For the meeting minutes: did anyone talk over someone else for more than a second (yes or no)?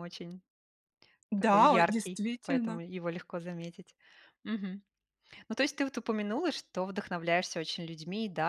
yes